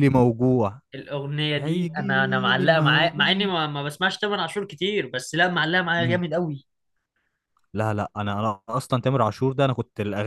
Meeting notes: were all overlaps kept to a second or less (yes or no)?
no